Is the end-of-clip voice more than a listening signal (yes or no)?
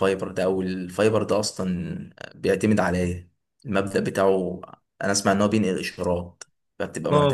yes